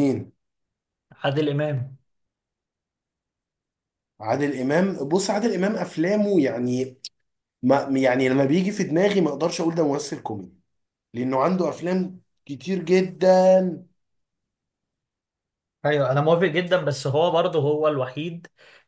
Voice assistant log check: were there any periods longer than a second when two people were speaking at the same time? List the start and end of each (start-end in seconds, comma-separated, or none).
none